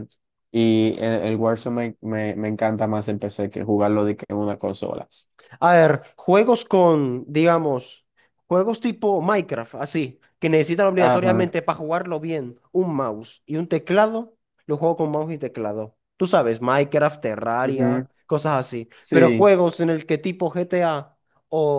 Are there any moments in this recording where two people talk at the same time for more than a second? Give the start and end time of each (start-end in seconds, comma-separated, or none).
none